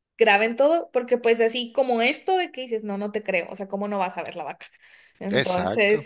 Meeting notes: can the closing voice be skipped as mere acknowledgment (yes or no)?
yes